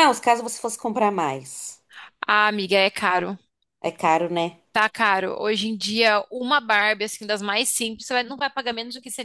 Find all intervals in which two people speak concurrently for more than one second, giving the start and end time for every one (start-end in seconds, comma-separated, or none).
none